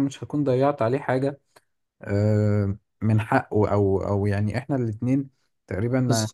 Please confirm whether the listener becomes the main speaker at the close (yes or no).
no